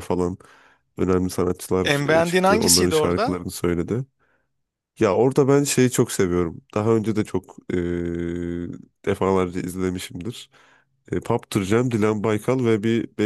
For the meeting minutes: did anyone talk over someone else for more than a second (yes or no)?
yes